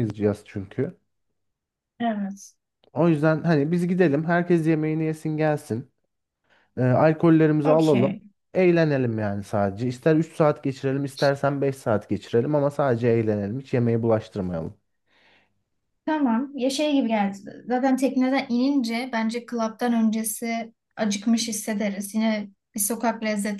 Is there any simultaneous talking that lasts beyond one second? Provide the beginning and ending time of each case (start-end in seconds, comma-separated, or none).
none